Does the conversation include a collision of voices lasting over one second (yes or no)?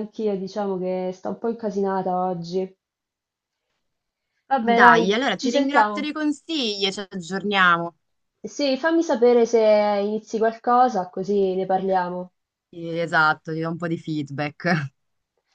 yes